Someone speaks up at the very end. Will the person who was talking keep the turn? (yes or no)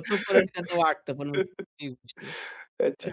no